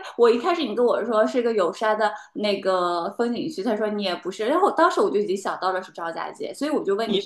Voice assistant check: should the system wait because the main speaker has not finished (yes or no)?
no